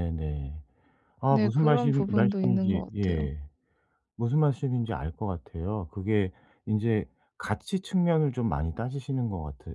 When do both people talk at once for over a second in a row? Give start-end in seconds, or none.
1.3-3.3